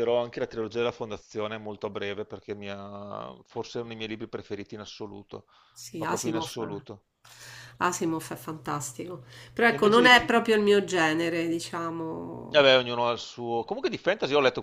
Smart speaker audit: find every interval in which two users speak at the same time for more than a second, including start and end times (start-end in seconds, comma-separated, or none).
none